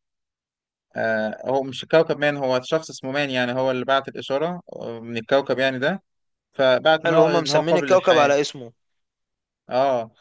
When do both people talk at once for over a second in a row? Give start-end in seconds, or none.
7.1-8.3